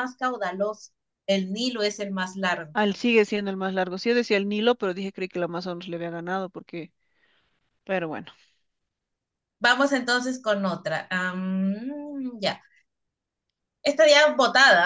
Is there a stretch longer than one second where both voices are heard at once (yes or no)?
no